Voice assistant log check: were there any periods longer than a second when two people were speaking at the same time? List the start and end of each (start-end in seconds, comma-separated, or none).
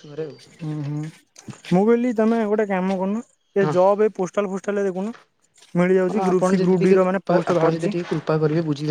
5.9-8.0